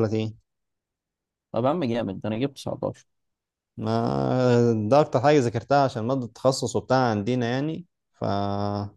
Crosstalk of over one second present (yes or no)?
no